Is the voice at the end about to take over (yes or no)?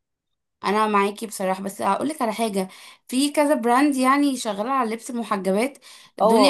yes